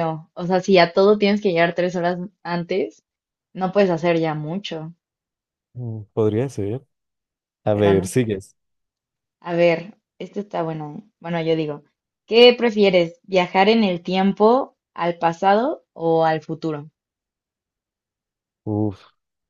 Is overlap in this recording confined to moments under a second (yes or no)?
yes